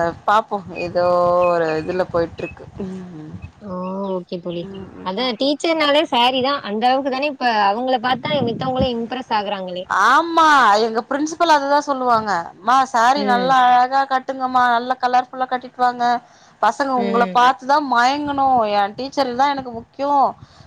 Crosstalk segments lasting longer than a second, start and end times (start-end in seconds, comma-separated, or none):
none